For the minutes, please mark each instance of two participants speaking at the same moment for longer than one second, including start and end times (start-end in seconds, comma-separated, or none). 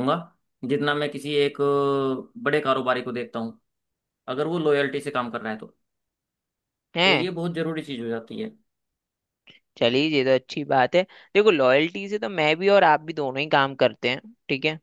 none